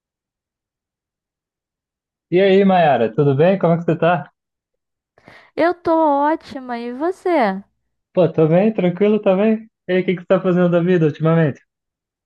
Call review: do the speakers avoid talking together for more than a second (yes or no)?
yes